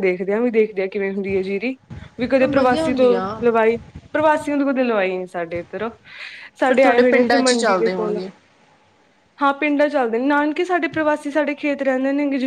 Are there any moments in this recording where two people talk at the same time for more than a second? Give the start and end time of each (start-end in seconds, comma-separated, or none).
6.7-8.2